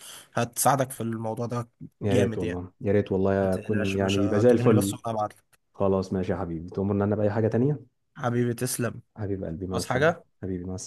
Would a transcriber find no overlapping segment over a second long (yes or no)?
no